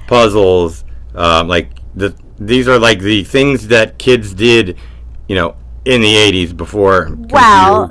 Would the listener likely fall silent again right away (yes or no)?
no